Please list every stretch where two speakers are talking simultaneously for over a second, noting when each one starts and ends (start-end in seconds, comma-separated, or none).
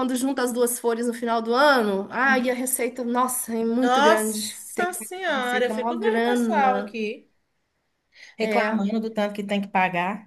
3.8-6.9